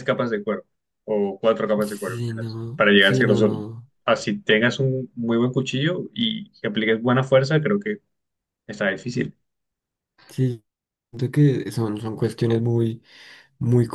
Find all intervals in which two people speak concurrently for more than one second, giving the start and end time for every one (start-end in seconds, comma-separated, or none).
1.8-3.5